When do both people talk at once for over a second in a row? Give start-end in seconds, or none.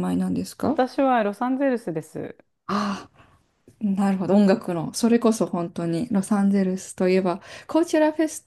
none